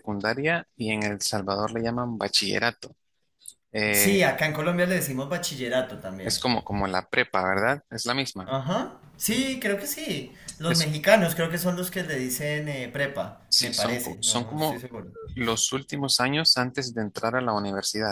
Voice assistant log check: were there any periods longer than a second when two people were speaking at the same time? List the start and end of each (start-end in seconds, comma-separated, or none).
13.5-14.8